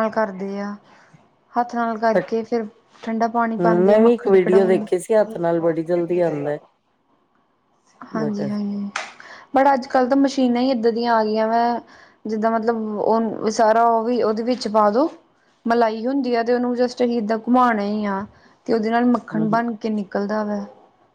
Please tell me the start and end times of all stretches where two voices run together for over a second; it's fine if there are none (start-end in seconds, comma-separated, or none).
3.6-4.8